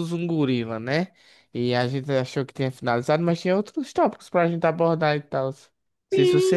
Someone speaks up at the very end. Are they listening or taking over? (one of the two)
taking over